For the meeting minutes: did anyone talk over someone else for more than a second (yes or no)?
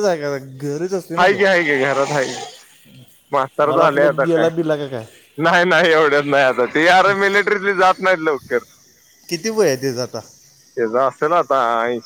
yes